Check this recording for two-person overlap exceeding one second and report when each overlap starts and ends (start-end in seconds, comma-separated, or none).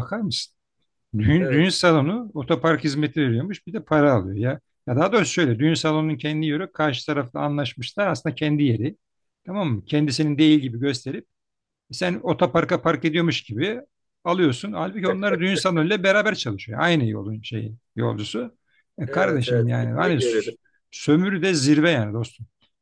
19.1-20.3